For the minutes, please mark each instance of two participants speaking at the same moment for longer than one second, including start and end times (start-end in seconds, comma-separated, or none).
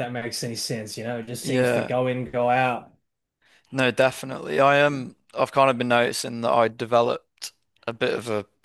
none